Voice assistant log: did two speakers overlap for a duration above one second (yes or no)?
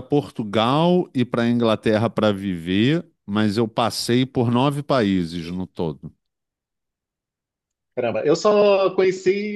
no